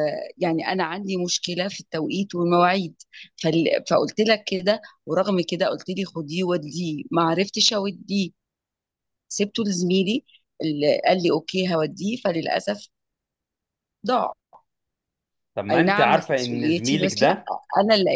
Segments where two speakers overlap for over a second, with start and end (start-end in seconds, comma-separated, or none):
15.7-17.4